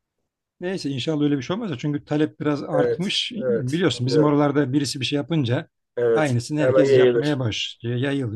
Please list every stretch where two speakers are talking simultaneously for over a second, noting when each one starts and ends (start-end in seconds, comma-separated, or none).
2.7-4.4, 6.1-7.4